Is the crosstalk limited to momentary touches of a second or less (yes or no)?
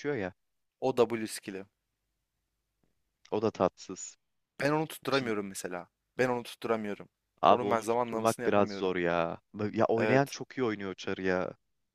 no